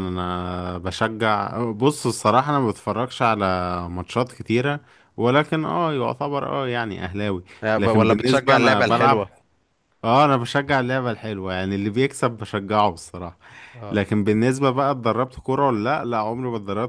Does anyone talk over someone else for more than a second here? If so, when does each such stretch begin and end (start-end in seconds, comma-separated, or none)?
7.6-9.2